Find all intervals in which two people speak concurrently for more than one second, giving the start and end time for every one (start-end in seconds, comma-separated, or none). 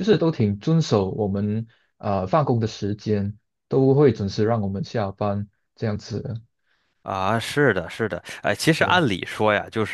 none